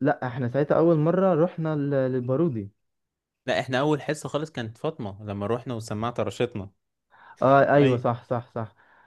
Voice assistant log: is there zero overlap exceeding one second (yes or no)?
yes